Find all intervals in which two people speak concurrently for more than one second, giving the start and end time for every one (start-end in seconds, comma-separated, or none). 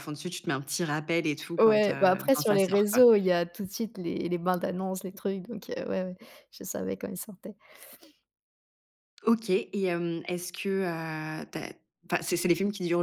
1.6-3.0